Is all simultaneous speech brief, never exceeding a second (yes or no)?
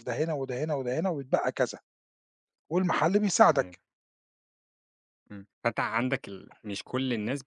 yes